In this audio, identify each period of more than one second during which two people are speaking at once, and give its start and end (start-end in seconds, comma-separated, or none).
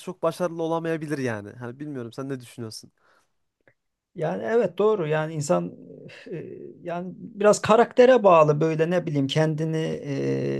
none